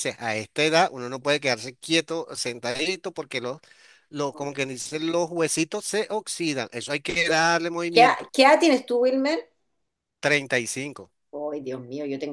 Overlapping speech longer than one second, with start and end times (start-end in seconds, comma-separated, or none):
none